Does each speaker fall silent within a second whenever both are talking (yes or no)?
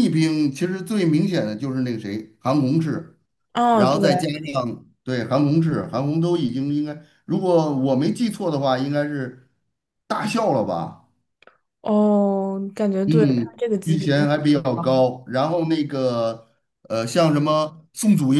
no